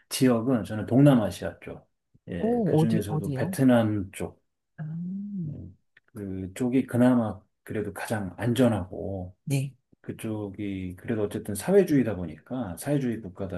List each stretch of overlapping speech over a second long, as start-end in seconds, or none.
2.4-3.6